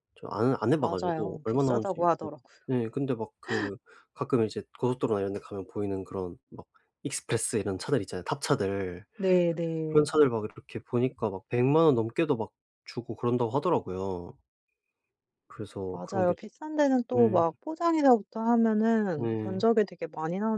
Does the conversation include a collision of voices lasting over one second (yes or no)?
yes